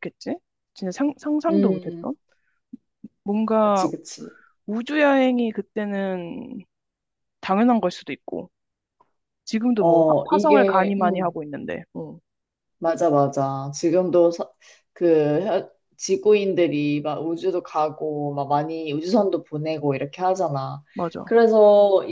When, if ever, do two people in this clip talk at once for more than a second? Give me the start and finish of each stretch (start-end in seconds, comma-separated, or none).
9.7-11.4